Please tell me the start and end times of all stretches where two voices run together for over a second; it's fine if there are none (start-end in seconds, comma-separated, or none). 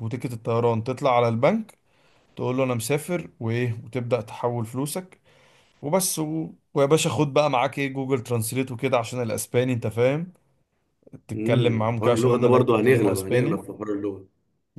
11.3-13.6